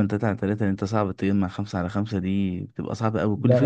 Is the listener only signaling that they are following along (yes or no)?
yes